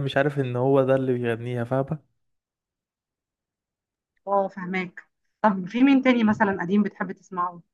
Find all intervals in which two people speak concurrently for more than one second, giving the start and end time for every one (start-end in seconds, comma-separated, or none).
none